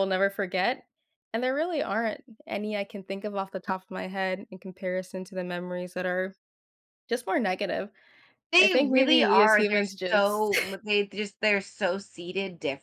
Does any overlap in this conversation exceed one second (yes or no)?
yes